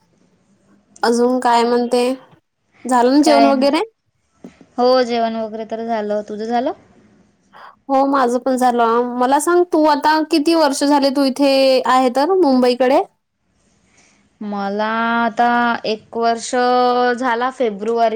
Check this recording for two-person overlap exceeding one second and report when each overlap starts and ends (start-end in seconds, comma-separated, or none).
none